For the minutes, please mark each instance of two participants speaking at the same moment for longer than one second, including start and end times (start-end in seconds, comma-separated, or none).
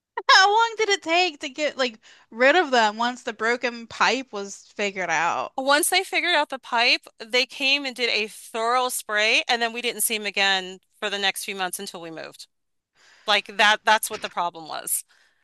none